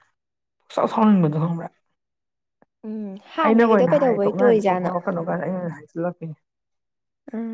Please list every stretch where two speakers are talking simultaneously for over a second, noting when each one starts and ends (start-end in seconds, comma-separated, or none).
3.4-4.9